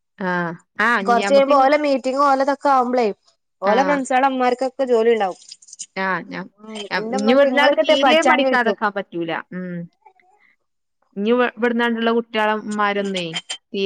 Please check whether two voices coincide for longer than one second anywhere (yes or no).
yes